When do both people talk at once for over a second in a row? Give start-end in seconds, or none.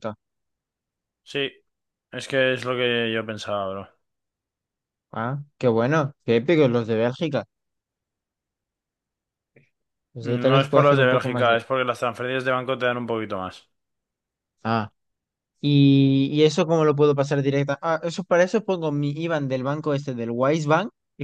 10.2-11.6